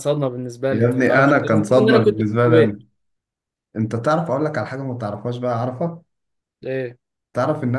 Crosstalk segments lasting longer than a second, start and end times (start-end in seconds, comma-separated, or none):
0.7-2.8